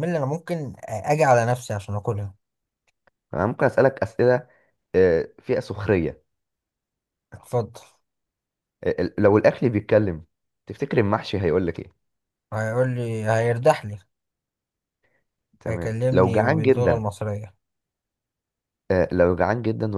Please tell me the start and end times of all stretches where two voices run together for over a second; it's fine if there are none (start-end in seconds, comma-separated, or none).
15.7-17.0